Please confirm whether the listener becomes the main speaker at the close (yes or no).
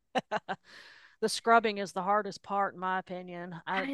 no